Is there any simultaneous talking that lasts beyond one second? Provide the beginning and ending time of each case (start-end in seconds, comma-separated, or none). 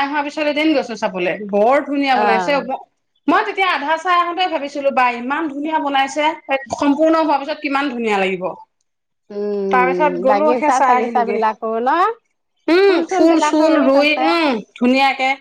9.8-11.4